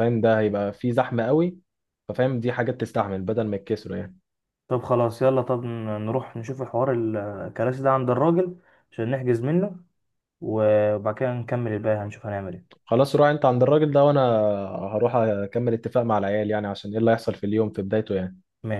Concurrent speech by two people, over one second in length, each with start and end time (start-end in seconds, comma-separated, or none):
none